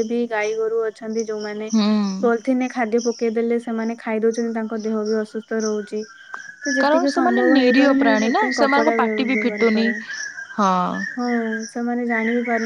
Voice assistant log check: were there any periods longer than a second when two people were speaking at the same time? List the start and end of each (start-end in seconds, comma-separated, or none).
6.8-9.9